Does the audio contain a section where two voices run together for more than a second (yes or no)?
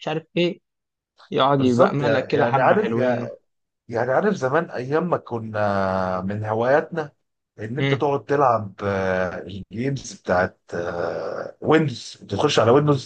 yes